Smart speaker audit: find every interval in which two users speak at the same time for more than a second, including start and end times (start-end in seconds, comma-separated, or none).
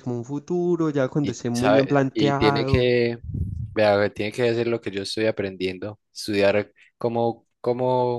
1.2-2.9